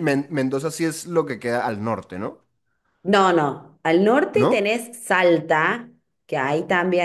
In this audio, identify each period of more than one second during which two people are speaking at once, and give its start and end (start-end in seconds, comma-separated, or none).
none